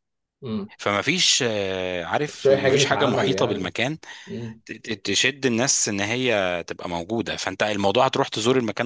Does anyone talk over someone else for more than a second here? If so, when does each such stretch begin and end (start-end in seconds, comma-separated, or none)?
2.3-3.7